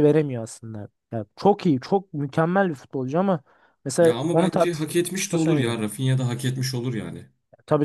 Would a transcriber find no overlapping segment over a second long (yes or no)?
no